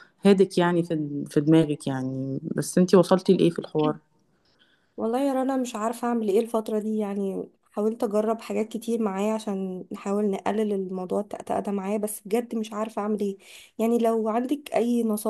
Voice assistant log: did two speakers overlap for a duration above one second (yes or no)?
no